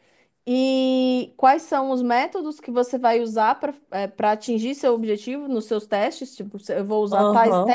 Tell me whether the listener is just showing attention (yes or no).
yes